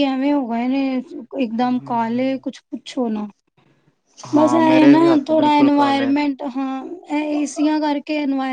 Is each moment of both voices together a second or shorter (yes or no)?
no